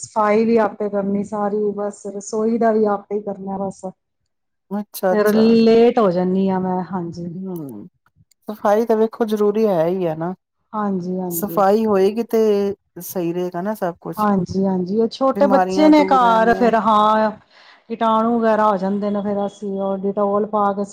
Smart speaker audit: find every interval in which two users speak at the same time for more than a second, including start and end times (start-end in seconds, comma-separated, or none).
15.3-16.7